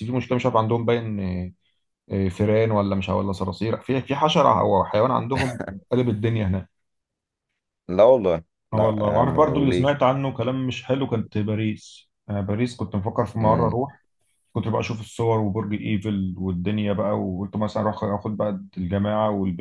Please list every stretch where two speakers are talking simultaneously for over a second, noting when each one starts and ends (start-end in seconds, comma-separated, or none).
8.7-9.9